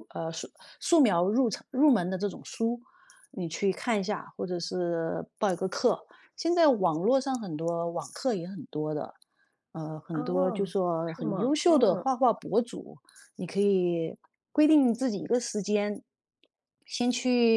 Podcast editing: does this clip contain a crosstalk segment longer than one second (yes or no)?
yes